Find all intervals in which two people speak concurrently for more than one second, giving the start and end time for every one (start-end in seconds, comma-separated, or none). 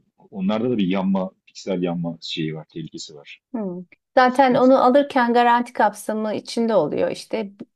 none